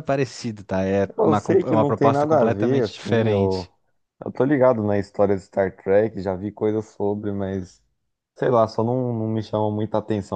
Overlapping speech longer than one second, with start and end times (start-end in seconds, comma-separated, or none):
1.2-3.7